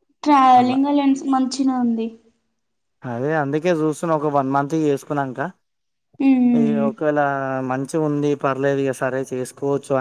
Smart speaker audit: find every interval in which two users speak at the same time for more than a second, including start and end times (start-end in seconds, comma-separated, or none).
none